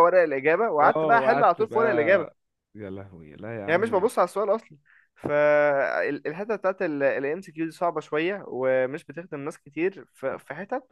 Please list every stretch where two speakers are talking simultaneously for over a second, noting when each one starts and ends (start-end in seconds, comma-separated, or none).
0.8-2.3